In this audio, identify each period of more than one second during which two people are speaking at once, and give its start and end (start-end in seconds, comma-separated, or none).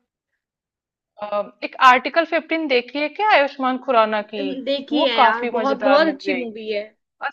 4.9-6.4